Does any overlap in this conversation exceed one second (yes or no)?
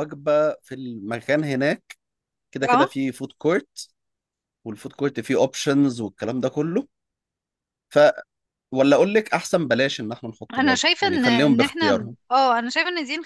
yes